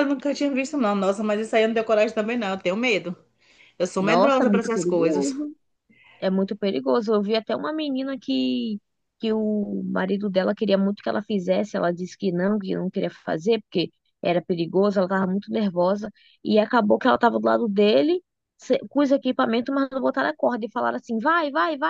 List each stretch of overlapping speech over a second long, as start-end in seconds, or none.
4.0-5.3